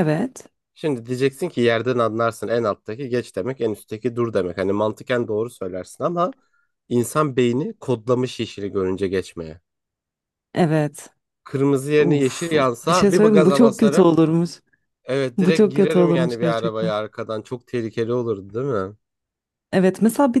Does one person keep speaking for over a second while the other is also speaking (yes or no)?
yes